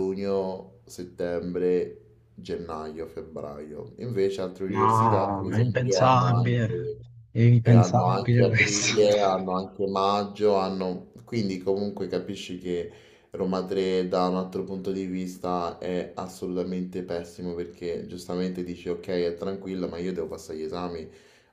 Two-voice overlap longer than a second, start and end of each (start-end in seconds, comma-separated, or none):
4.7-6.9, 7.6-8.9